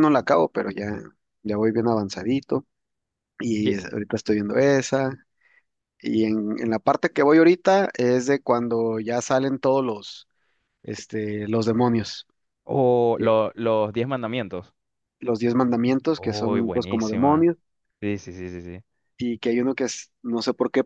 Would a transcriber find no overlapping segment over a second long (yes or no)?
no